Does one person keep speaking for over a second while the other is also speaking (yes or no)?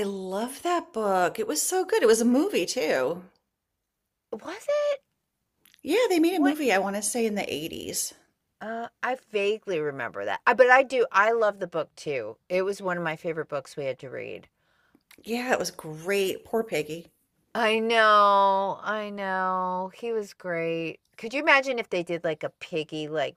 no